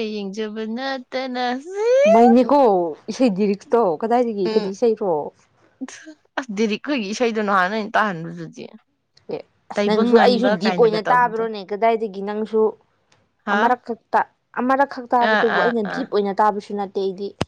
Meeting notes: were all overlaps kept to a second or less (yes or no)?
no